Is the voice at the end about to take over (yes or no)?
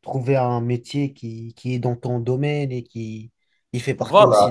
no